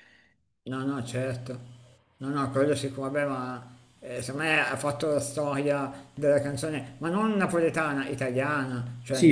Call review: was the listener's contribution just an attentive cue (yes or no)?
no